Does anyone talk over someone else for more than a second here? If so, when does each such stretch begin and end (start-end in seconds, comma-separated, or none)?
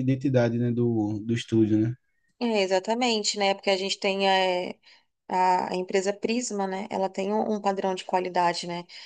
none